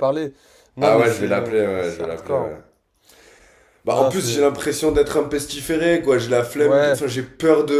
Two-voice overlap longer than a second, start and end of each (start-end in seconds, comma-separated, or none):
0.8-2.6